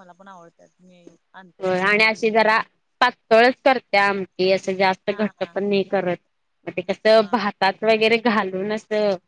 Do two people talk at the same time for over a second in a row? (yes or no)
no